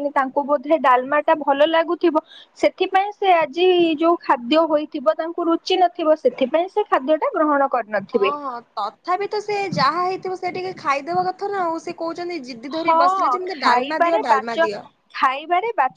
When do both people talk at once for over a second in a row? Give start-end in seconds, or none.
12.8-14.6